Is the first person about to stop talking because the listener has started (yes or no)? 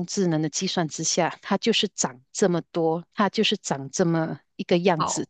no